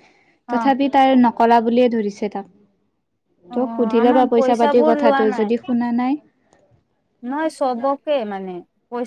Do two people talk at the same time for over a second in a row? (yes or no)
yes